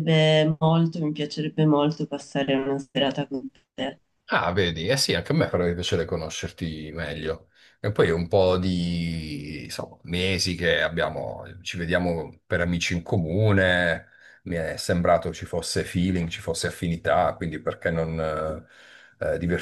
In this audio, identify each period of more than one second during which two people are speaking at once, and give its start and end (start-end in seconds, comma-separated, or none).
none